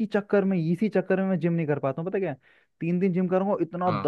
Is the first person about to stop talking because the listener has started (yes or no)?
no